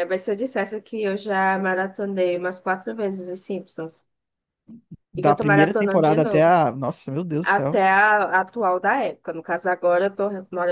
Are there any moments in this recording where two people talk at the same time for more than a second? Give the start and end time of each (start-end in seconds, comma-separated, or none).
5.2-6.6